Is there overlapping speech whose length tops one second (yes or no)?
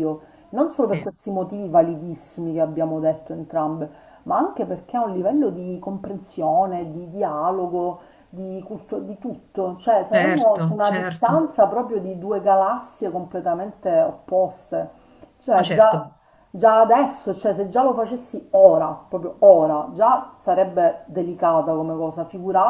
yes